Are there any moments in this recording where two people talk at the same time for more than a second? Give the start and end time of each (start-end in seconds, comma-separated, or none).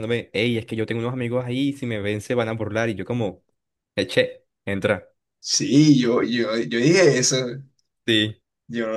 none